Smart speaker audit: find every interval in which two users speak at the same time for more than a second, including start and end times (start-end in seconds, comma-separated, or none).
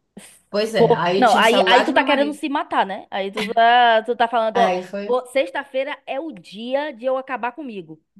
0.8-2.4